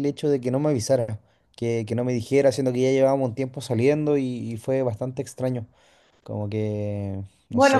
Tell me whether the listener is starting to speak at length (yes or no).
yes